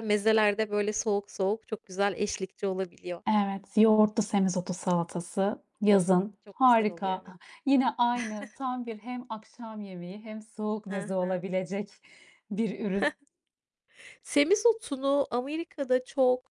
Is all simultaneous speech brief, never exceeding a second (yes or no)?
no